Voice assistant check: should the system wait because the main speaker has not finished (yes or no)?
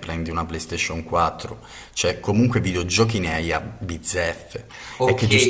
no